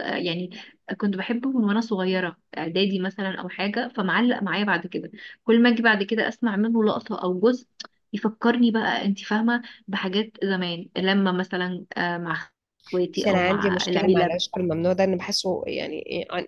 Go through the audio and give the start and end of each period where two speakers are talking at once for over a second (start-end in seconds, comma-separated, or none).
13.1-14.3